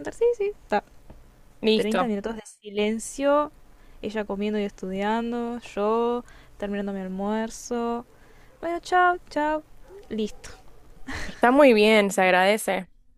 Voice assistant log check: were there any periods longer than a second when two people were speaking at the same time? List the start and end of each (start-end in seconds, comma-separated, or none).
none